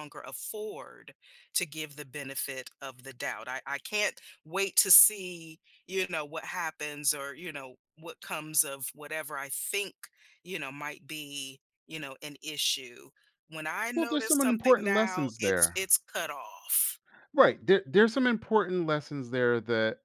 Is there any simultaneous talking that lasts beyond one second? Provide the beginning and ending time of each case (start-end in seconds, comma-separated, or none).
13.9-15.8